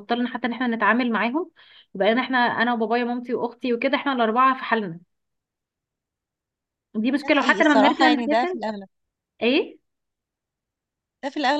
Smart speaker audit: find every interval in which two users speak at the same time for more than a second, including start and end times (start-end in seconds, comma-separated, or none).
7.2-8.6